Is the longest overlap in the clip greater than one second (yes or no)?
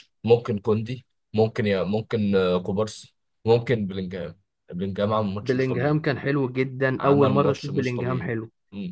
yes